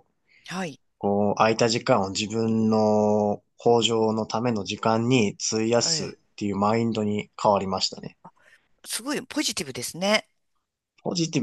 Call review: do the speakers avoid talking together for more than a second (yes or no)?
yes